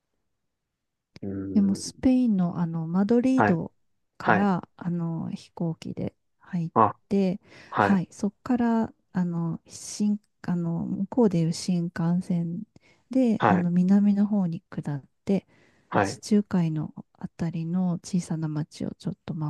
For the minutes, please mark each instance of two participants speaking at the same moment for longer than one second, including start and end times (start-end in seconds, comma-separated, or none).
none